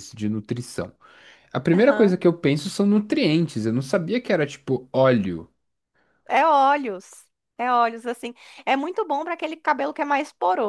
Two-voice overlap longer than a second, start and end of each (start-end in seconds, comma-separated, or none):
none